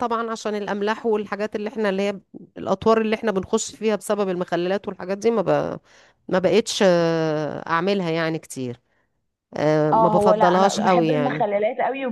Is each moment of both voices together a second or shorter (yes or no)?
no